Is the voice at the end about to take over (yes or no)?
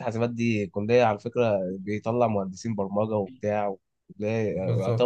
yes